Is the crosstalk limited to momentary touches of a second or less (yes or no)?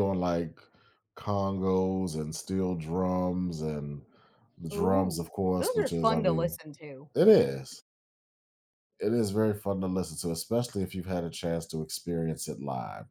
no